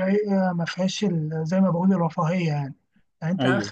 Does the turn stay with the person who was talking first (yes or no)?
yes